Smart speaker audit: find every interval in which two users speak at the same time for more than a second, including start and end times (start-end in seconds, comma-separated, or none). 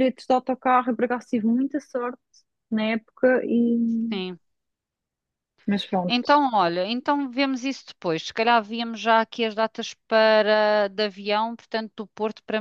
none